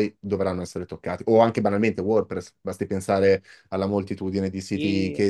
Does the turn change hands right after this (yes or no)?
no